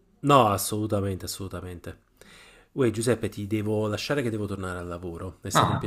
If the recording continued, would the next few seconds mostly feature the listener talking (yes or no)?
yes